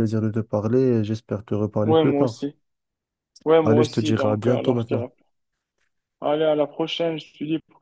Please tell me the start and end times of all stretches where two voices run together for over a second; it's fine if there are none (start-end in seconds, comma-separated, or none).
3.6-5.1